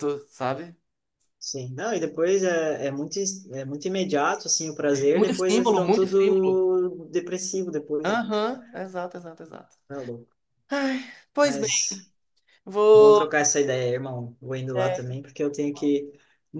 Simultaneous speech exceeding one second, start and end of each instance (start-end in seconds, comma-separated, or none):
5.1-6.6